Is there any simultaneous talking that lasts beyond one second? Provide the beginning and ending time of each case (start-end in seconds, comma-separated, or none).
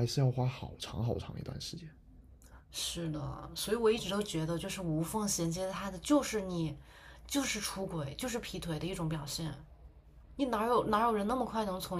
none